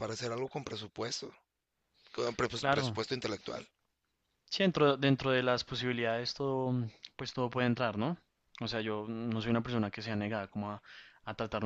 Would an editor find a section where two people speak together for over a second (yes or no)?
no